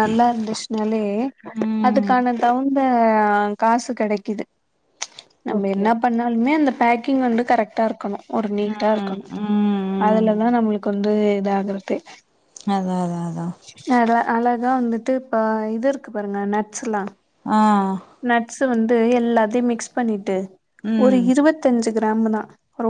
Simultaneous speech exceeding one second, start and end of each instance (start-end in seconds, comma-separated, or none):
none